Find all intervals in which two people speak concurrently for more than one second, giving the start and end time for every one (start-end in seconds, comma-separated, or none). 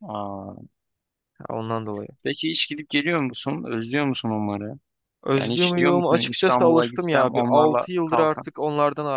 5.4-8.5